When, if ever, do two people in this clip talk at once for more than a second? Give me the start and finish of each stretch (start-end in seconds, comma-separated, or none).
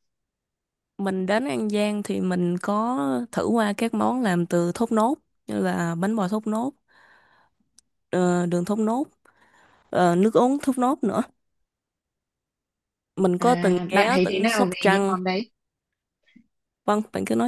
13.4-15.1